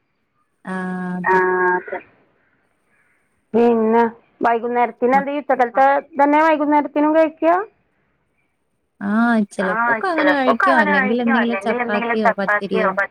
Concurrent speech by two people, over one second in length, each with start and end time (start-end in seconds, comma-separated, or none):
9.7-12.3